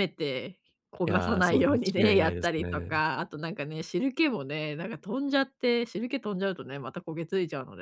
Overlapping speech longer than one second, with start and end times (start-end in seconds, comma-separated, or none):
1.1-2.9